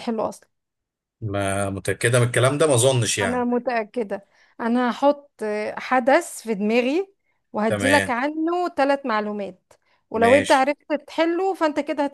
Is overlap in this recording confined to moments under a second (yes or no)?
yes